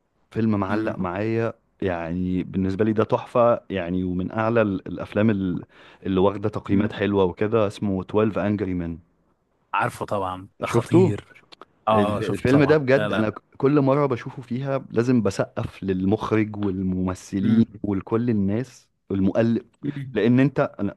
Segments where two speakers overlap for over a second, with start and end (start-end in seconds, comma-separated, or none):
11.9-13.3